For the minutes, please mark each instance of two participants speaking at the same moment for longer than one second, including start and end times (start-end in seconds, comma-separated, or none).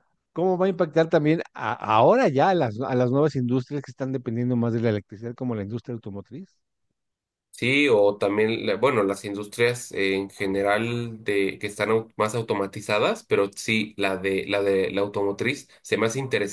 none